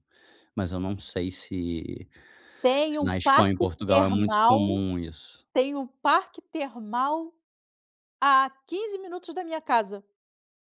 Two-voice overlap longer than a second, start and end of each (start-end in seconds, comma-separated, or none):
2.9-4.8